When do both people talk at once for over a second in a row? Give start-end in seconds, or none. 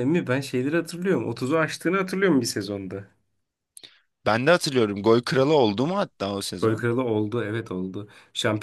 none